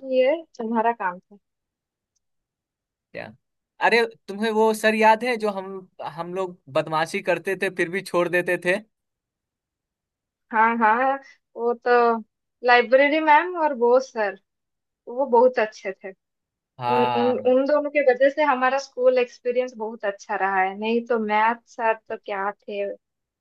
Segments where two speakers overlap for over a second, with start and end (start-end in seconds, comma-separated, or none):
none